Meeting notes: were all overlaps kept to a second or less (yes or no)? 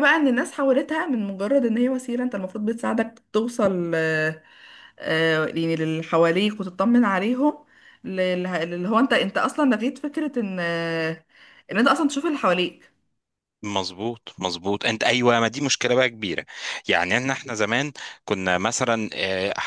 yes